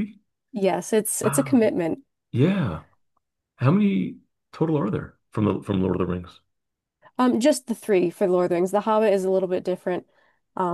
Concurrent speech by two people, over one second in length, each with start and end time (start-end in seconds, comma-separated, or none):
none